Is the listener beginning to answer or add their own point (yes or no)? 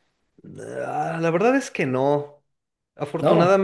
no